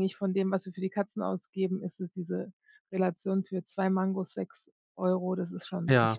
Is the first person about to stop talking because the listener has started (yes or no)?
yes